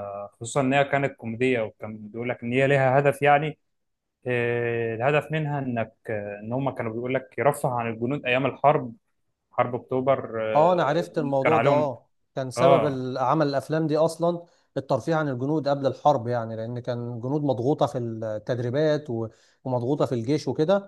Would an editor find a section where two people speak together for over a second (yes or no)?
yes